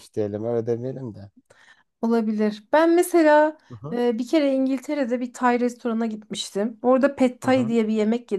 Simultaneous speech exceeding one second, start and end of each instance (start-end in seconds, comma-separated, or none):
none